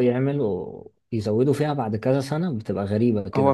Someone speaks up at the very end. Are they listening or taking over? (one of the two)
taking over